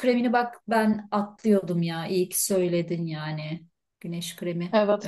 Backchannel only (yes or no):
no